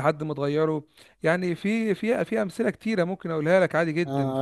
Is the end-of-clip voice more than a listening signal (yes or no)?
yes